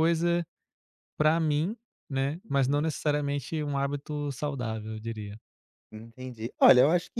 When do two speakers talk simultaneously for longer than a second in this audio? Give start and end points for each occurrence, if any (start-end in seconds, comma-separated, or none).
none